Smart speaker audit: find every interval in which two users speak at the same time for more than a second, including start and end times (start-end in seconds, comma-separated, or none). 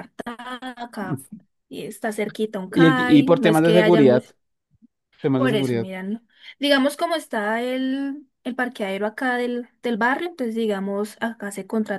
2.7-4.2